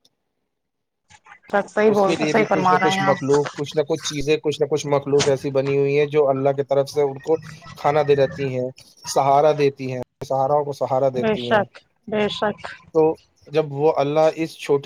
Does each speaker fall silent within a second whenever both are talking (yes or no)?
no